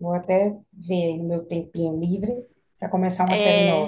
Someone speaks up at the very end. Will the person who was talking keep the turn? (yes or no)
no